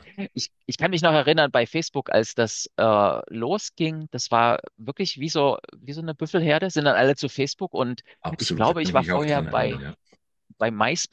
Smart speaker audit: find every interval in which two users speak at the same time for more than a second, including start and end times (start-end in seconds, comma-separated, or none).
8.2-9.8